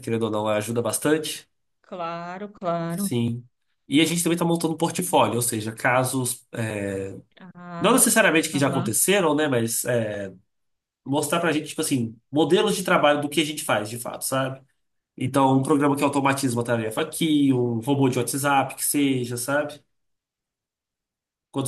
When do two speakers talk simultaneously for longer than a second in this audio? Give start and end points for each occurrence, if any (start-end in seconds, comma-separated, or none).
none